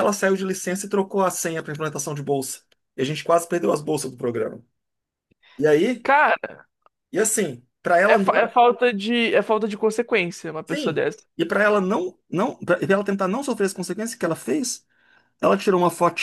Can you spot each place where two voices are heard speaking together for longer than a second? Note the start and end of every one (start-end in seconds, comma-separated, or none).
none